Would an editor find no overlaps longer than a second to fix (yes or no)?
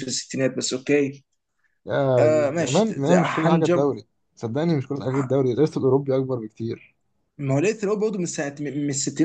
no